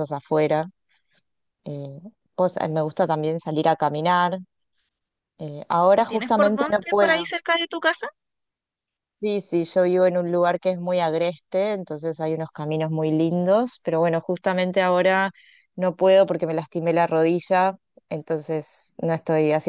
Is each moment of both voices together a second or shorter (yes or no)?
no